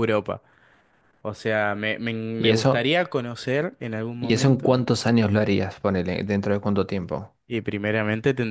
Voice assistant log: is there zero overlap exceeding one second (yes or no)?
yes